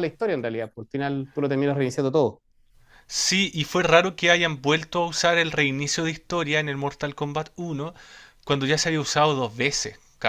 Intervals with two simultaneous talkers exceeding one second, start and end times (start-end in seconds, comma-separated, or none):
none